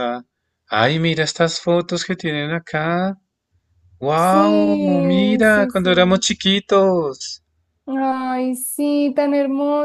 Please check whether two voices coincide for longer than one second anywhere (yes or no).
yes